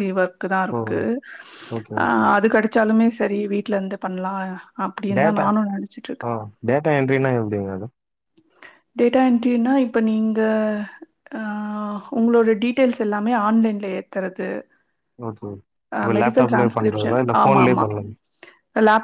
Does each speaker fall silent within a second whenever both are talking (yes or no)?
no